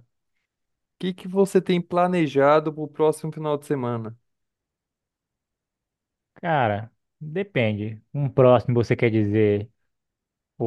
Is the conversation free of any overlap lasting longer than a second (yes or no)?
yes